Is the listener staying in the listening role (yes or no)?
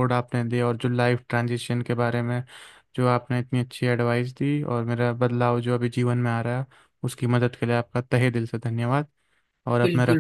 no